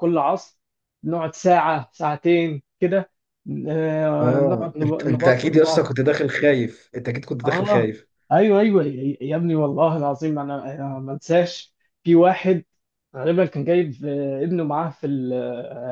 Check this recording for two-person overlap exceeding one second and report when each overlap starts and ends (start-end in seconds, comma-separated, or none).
4.2-5.9